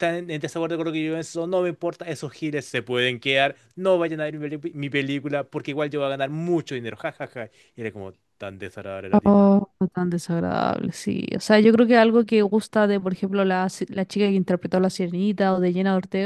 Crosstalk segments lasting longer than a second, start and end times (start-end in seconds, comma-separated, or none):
none